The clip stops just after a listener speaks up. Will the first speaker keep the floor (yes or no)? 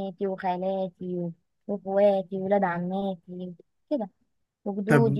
no